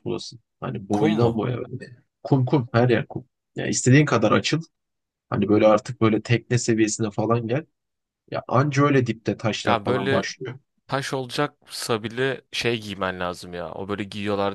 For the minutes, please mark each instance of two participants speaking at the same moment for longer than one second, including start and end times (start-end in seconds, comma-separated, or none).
none